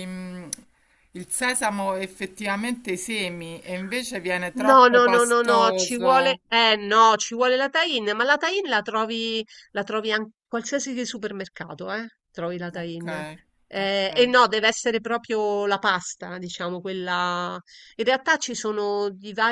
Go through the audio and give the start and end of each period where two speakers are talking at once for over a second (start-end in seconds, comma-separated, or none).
4.7-6.4